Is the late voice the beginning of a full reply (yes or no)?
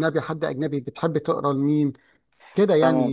yes